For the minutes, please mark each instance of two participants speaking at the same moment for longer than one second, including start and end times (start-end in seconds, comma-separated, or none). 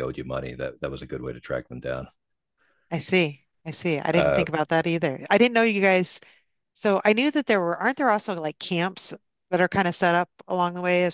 none